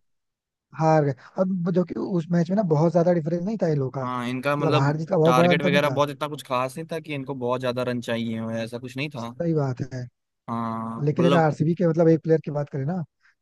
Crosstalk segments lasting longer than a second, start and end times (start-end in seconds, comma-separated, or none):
4.0-6.0